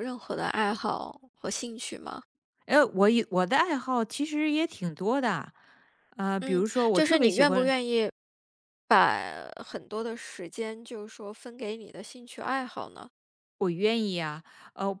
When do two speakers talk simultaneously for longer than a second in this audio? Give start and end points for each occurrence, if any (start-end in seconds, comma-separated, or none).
6.4-7.7